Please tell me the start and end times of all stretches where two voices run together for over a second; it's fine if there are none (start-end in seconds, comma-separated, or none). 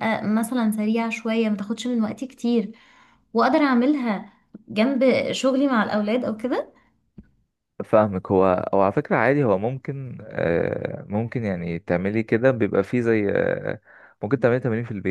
none